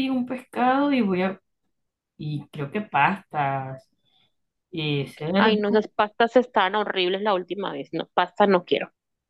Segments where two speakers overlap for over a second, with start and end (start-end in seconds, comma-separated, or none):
none